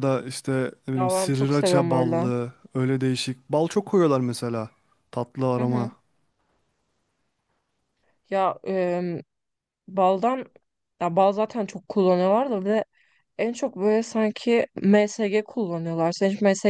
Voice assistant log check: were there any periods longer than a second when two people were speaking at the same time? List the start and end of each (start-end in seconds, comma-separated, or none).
0.9-2.3